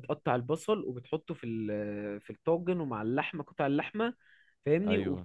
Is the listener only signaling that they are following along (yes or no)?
yes